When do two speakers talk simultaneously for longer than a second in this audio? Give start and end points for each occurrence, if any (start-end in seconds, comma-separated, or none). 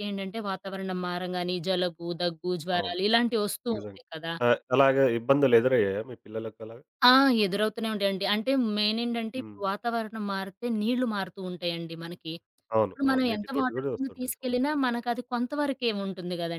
12.9-14.8